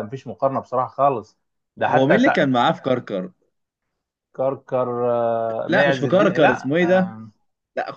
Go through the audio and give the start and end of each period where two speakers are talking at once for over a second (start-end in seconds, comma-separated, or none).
5.7-7.1